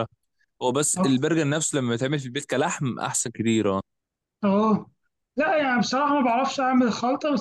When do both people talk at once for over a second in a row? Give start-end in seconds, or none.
none